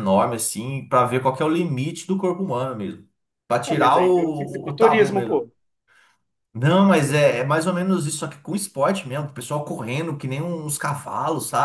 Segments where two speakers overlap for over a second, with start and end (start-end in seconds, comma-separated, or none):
3.6-5.4